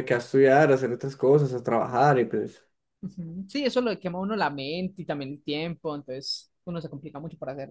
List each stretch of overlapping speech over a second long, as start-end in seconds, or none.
none